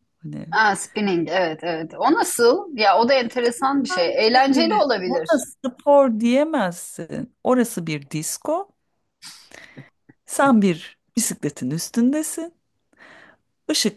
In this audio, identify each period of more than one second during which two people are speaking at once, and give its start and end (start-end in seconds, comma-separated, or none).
3.9-5.3